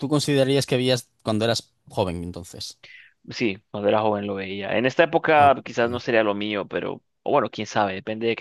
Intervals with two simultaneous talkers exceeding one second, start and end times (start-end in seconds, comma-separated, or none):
none